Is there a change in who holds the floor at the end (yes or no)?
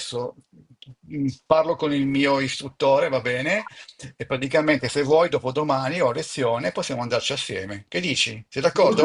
yes